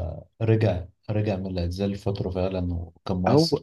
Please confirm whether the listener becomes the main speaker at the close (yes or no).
yes